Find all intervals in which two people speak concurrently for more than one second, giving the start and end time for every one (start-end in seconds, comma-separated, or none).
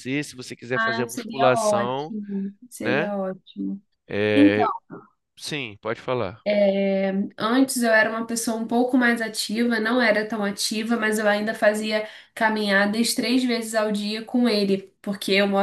0.7-2.1